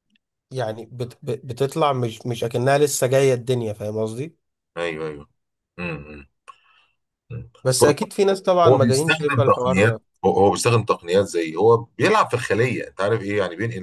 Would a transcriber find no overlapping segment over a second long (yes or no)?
no